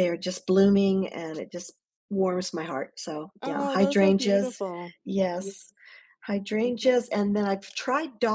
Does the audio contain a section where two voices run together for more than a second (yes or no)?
yes